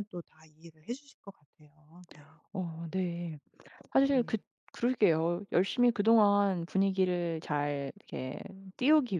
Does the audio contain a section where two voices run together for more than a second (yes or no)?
no